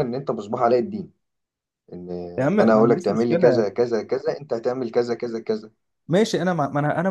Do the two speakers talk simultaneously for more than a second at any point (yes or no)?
yes